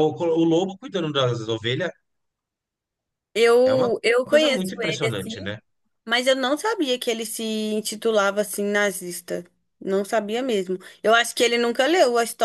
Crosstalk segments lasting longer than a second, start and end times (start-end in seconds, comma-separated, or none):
3.6-5.5